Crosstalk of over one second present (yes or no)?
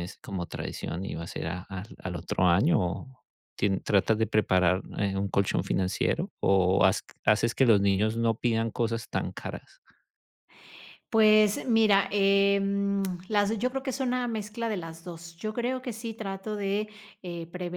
no